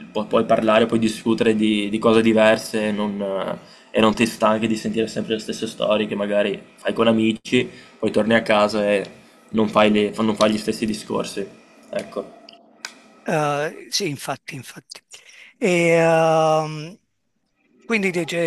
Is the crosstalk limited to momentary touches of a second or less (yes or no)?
yes